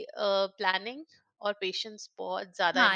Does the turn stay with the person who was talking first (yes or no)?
no